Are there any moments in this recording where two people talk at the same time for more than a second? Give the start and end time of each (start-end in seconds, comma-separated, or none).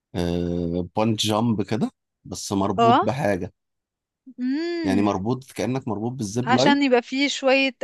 none